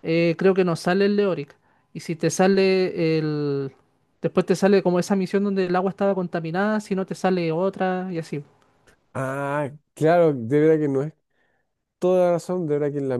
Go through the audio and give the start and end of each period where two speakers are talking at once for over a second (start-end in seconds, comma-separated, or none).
none